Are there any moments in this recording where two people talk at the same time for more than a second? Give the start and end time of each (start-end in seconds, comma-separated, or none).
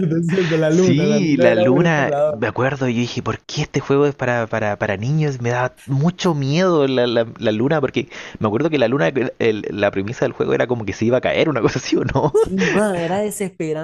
0.7-2.4